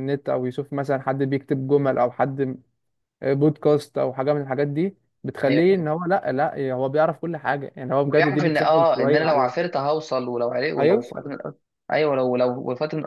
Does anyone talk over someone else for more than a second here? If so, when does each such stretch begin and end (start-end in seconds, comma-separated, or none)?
8.0-9.7